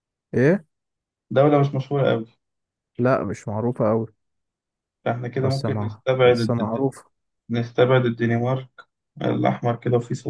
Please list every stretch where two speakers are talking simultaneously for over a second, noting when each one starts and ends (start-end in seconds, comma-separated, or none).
5.4-6.9